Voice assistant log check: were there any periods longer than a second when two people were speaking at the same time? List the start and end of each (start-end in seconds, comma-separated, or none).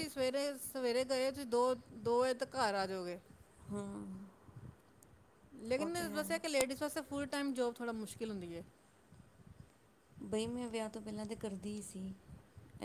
none